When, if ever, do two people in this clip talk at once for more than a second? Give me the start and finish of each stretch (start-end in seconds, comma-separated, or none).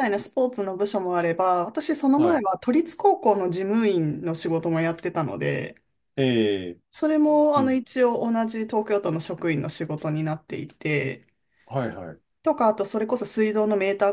none